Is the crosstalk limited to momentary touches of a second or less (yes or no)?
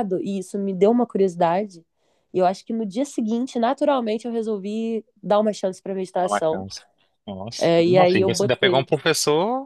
no